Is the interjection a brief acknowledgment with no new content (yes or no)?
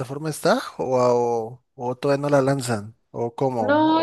no